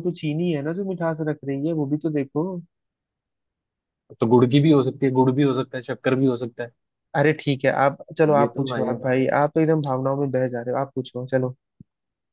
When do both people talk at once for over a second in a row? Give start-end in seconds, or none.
none